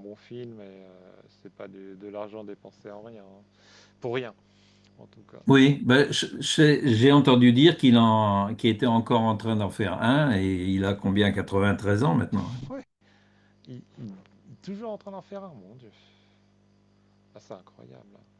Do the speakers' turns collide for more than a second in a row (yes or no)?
no